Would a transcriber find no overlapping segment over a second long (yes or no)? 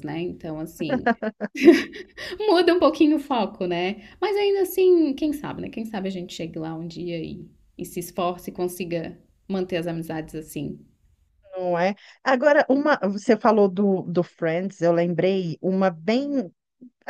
yes